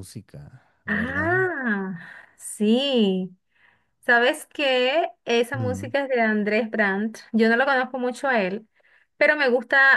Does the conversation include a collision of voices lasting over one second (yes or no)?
no